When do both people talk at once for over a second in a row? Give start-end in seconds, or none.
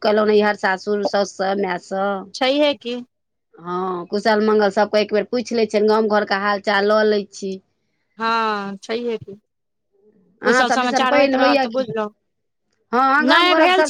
10.5-11.9